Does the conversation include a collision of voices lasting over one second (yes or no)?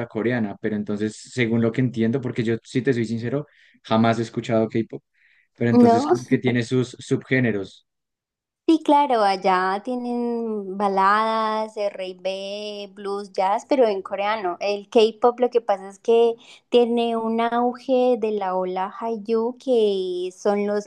no